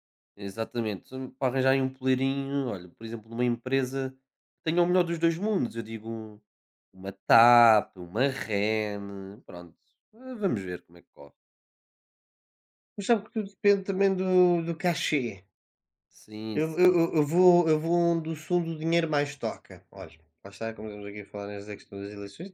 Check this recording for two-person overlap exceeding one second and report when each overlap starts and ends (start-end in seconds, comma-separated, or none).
none